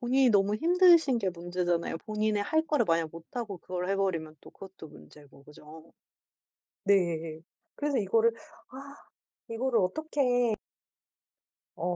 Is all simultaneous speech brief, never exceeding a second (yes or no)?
yes